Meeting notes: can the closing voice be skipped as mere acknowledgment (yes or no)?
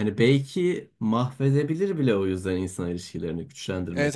no